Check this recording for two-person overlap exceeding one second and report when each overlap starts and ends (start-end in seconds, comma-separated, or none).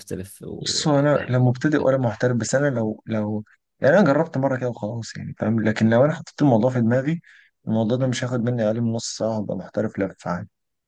0.6-1.9